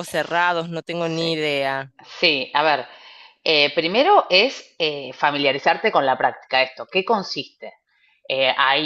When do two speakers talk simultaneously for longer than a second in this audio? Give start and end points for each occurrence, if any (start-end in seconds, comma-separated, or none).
none